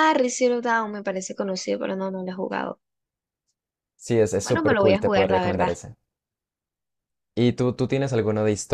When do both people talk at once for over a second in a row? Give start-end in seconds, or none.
4.4-5.7